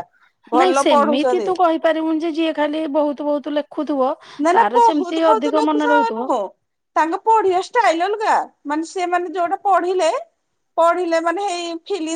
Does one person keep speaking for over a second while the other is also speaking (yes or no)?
yes